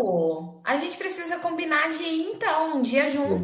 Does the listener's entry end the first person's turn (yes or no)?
yes